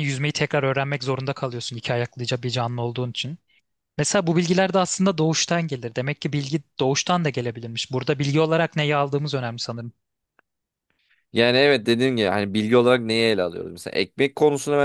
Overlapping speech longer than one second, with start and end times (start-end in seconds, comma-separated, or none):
none